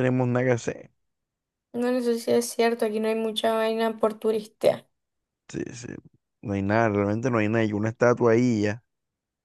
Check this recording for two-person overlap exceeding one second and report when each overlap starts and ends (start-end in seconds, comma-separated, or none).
none